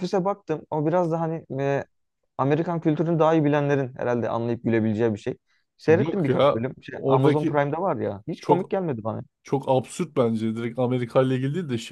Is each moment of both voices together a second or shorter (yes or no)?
no